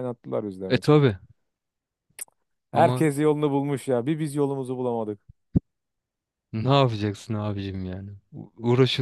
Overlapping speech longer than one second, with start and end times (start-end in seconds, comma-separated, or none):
none